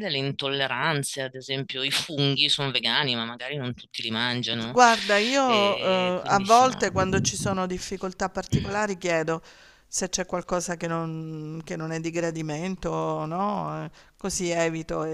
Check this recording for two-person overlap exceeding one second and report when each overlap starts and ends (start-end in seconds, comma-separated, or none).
5.5-6.8